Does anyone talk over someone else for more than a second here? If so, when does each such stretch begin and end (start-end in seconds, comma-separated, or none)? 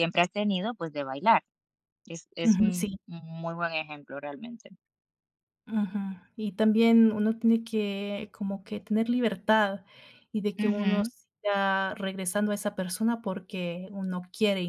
none